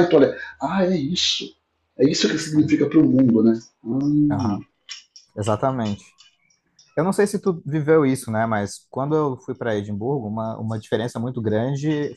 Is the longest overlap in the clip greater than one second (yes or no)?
no